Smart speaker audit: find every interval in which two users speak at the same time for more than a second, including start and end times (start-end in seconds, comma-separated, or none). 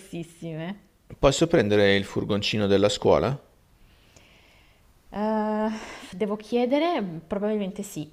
none